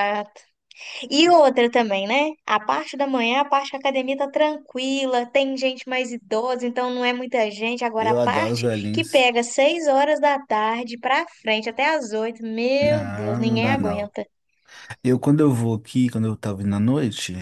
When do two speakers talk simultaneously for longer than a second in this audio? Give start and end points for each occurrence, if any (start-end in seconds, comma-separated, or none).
8.0-9.3, 12.8-14.1